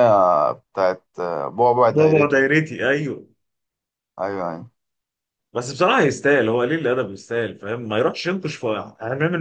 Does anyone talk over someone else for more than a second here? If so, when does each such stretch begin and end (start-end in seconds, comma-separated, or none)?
none